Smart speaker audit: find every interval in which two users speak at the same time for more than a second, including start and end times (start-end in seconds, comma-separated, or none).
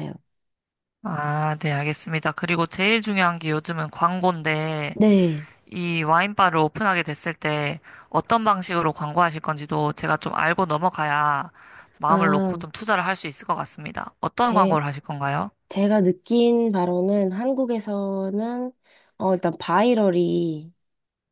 none